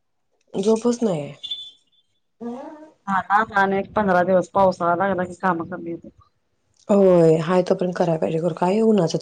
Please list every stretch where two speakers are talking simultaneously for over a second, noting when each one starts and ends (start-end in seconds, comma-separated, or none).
none